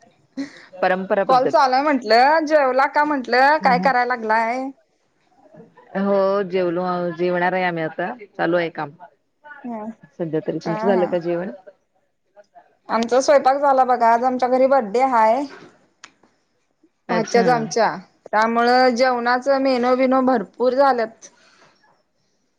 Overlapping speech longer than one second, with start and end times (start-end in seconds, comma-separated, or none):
none